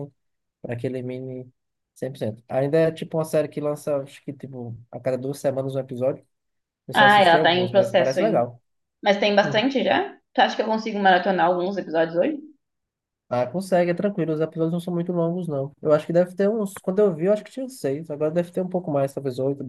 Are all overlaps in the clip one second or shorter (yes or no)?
no